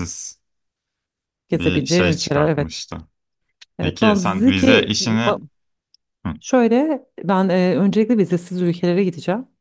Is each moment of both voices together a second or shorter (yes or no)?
no